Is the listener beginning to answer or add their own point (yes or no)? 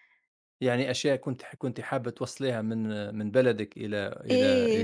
yes